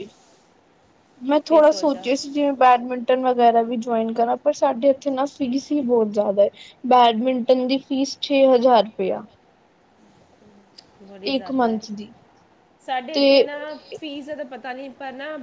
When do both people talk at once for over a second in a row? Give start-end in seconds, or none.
none